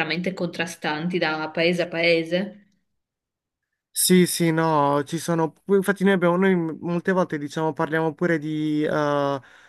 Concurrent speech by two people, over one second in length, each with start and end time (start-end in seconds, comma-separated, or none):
none